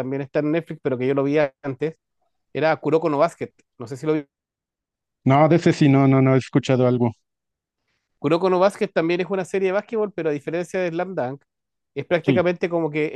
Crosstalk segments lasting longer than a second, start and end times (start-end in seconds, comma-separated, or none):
none